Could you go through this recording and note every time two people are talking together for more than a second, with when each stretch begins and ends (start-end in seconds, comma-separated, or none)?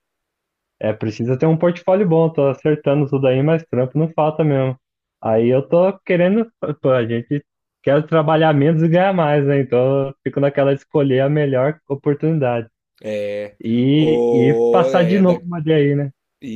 13.9-15.4